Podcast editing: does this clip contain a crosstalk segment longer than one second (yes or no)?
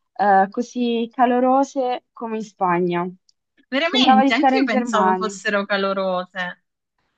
yes